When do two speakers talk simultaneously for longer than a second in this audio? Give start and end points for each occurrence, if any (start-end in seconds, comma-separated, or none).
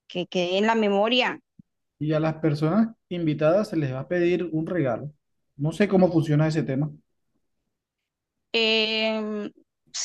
none